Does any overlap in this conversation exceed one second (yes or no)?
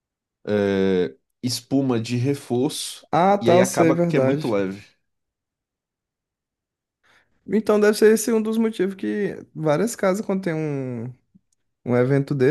yes